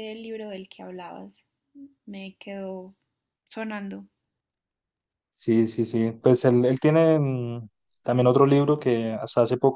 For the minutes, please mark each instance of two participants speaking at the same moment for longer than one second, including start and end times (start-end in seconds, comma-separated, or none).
none